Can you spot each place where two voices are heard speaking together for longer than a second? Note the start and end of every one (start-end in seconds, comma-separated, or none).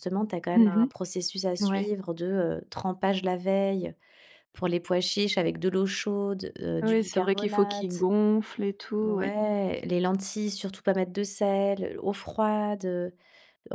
6.8-8.1